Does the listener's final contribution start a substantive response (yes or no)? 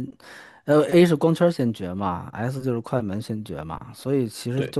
no